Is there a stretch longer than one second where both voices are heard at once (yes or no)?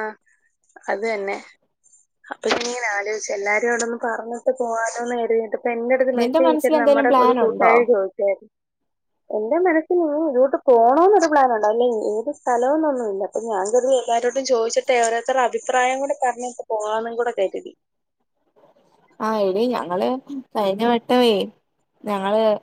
yes